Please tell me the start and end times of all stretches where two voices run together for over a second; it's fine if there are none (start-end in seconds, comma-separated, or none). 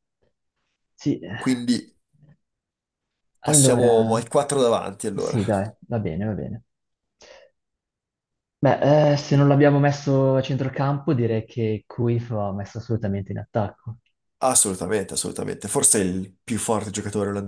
none